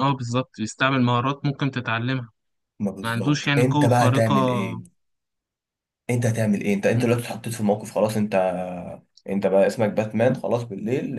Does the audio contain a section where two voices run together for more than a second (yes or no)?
yes